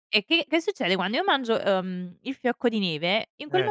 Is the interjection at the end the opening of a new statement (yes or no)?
no